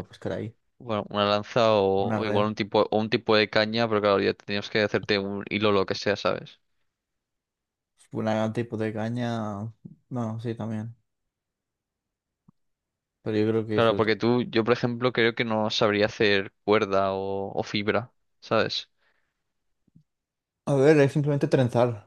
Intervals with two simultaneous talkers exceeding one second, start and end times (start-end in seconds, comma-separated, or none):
none